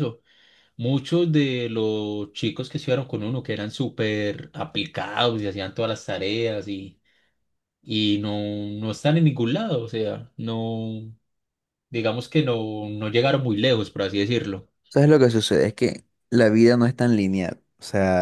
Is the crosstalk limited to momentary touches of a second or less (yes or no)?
yes